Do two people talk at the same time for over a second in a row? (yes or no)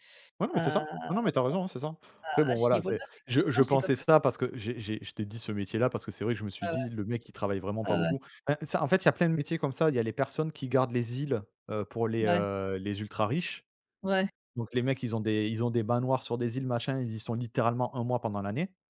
yes